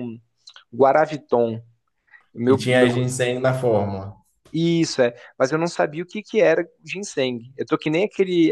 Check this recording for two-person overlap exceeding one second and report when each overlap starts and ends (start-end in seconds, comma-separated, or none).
none